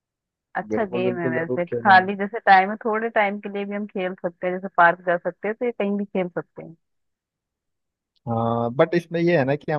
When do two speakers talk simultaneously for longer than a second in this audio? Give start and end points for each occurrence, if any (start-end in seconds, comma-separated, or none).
0.7-2.1